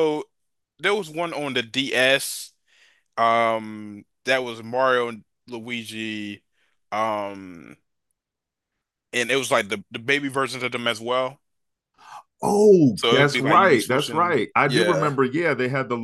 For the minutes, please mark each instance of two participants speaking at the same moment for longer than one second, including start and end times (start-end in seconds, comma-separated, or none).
12.9-15.1